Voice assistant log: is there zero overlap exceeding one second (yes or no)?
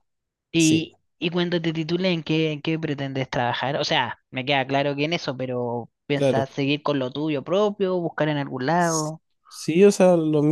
yes